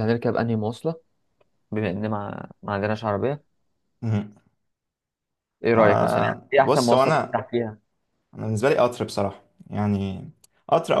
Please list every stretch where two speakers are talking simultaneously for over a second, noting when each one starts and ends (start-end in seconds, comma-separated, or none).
5.7-7.4